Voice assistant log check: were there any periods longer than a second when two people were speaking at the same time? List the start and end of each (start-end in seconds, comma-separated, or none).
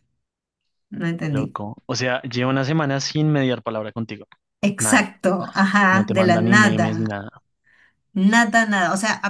5.9-7.2